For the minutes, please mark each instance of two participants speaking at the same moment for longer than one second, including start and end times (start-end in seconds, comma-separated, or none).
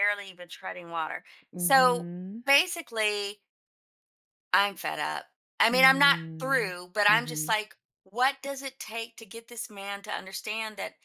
5.7-7.6